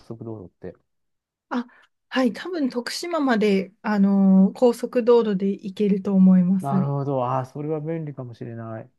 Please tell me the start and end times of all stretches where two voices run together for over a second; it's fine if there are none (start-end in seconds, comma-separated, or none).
none